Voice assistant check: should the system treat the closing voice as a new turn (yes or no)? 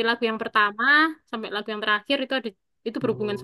yes